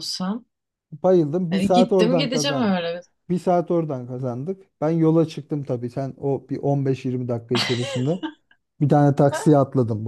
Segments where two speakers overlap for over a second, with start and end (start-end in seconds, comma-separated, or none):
1.5-2.8